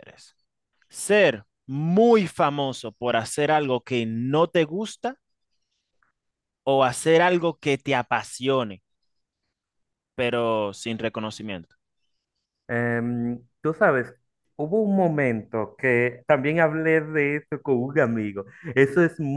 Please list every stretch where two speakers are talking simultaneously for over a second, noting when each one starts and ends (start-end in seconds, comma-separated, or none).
none